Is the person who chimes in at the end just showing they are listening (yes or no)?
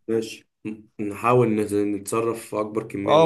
no